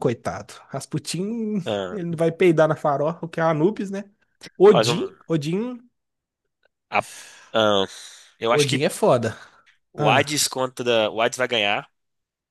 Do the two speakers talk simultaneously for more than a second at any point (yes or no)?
no